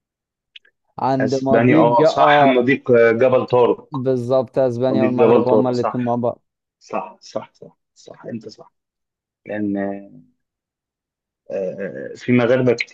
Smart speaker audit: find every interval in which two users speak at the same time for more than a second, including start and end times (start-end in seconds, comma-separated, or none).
1.2-2.7, 4.9-6.2